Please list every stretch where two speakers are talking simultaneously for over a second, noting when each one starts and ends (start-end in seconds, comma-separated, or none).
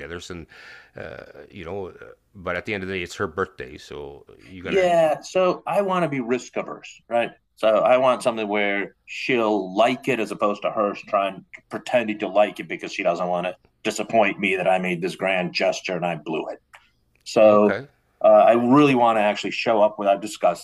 none